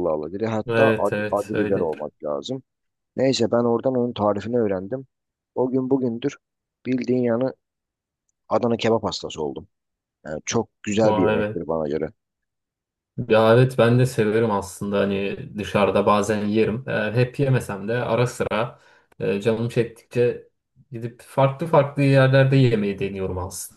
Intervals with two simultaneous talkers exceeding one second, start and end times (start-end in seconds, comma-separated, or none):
0.7-2.0